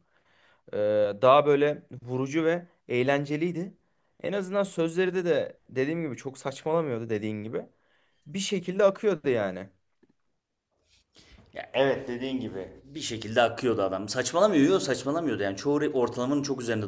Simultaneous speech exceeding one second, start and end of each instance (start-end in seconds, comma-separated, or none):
none